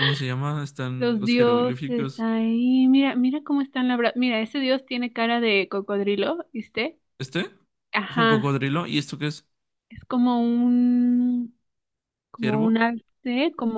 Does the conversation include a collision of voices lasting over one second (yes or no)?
yes